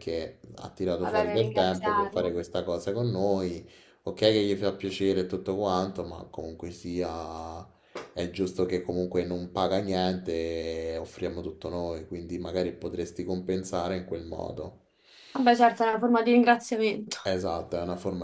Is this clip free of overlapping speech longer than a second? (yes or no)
no